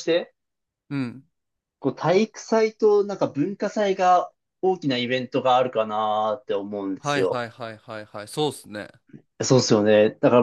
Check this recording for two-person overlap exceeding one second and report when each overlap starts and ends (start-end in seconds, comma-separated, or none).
none